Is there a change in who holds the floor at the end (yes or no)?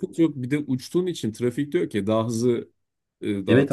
yes